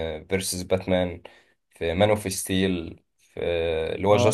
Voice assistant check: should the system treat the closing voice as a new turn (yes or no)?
no